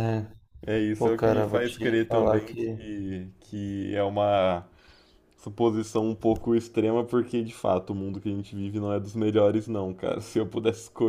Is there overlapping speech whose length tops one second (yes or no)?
yes